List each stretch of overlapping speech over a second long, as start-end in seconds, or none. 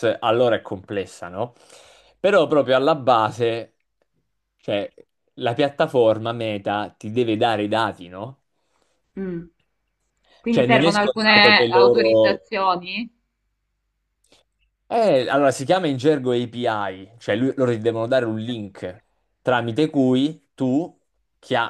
10.5-12.4